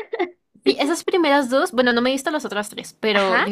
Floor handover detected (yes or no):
no